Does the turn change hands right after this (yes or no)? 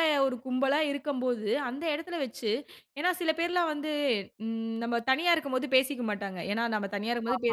no